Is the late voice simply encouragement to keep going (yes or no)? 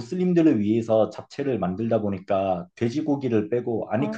yes